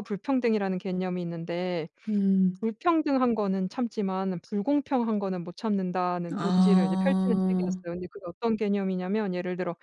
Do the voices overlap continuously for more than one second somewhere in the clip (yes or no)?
yes